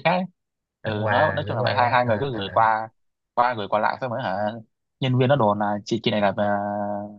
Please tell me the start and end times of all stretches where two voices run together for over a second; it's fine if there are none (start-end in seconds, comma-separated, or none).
0.8-2.6